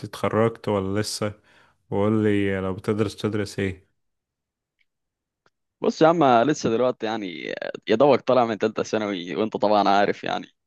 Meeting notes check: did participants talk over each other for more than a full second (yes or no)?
no